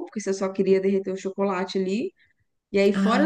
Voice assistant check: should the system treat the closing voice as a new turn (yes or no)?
no